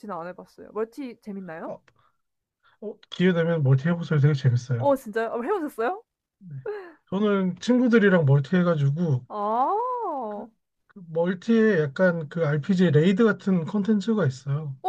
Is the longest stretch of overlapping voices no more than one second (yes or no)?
yes